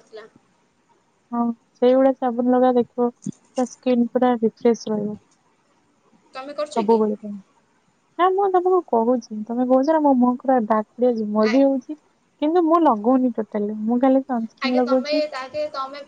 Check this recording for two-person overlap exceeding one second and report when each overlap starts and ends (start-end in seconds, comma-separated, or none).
none